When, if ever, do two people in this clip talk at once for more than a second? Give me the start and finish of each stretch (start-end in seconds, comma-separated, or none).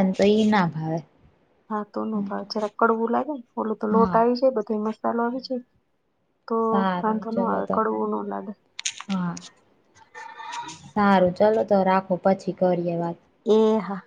none